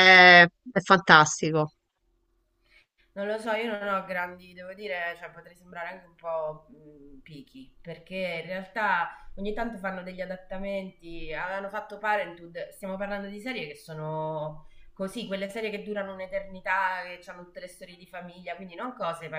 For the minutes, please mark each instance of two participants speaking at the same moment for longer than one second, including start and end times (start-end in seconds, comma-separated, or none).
none